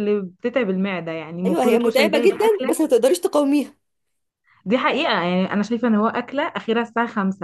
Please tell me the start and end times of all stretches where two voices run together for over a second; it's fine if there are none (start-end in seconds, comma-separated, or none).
1.4-2.8